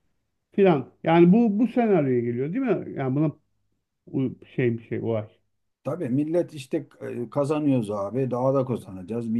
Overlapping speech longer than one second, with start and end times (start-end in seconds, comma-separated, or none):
none